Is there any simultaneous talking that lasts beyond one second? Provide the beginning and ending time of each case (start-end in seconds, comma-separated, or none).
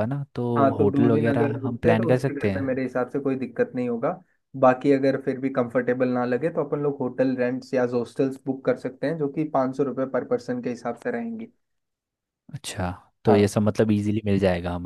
0.8-2.8